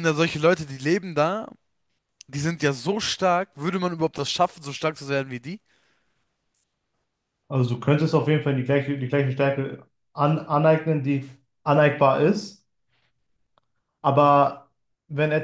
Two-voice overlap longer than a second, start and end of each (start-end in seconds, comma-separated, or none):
none